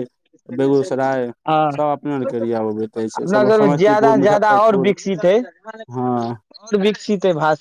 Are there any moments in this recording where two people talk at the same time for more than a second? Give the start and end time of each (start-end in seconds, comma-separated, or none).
3.2-4.9